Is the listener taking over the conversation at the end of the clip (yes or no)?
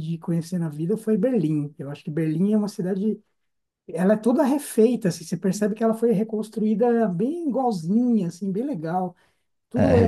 yes